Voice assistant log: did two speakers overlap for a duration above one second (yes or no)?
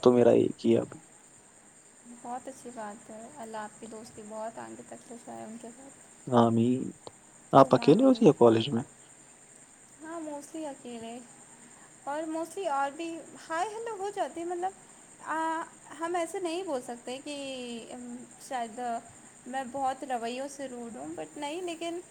no